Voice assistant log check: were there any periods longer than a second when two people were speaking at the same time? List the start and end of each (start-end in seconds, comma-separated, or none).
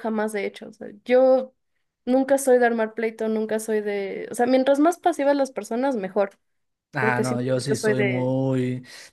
7.0-8.3